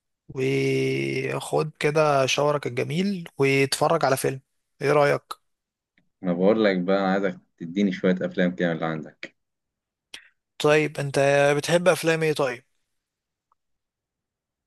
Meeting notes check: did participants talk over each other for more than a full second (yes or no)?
no